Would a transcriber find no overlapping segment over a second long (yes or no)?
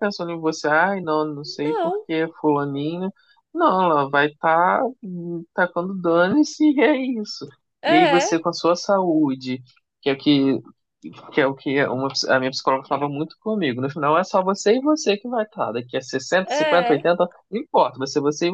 yes